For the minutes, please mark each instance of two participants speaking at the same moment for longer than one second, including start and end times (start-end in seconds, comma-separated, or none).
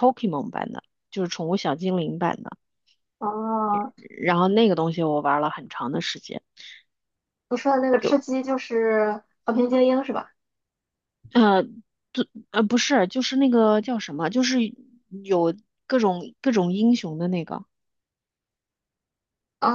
none